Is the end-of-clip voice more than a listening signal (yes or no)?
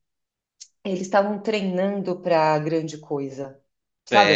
yes